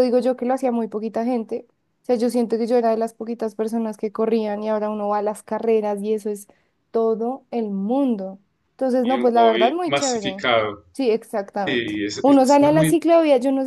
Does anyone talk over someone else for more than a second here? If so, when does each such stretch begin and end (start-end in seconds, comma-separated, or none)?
9.0-10.4, 11.7-13.0